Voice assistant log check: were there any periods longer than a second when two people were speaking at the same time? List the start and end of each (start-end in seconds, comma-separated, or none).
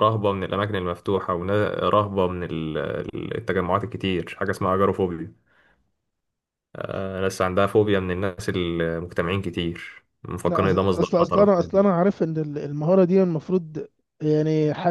10.4-11.9